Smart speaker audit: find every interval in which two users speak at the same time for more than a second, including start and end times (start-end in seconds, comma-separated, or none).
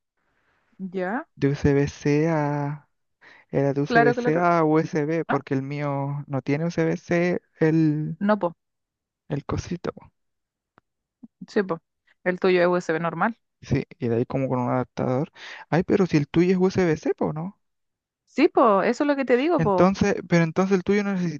none